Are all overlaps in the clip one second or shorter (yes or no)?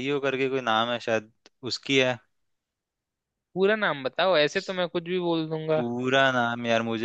yes